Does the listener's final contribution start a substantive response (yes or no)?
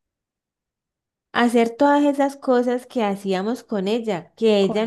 no